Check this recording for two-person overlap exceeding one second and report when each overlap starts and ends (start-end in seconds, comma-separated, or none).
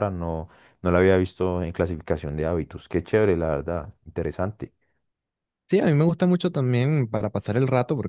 none